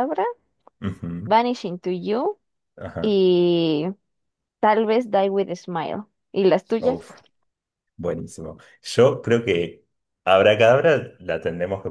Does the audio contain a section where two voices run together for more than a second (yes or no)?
no